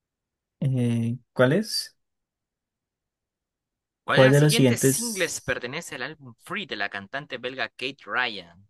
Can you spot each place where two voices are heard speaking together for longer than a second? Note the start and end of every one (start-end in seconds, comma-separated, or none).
4.1-5.6